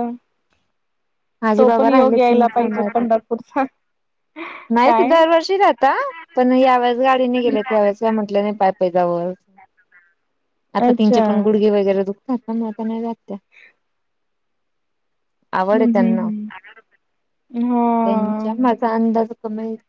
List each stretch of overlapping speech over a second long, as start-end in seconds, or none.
1.6-3.0